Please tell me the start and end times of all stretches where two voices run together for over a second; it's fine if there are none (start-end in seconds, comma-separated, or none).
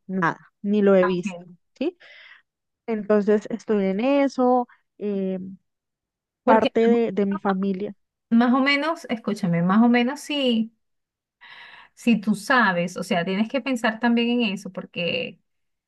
none